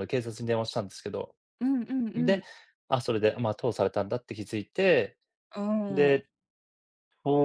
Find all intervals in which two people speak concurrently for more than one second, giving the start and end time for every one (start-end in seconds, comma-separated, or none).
none